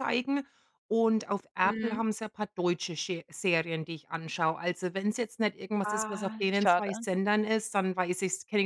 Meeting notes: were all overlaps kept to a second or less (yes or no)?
no